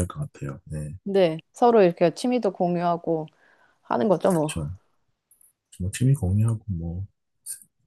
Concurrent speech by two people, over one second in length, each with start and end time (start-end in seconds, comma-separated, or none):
none